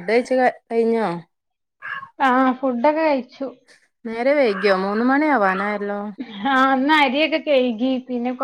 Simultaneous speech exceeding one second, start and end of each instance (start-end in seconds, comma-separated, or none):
none